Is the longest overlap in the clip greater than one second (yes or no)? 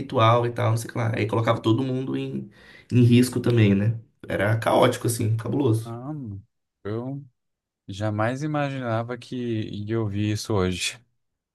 no